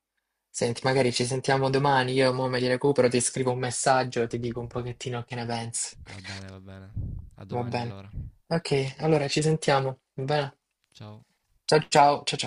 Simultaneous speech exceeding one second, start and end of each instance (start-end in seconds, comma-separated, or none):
none